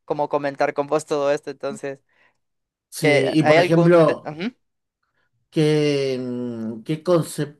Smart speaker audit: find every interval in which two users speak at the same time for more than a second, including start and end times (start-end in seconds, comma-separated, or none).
3.0-4.3